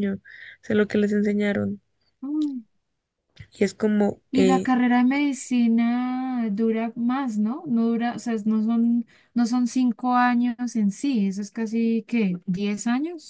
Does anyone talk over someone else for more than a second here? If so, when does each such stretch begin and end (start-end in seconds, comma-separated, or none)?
none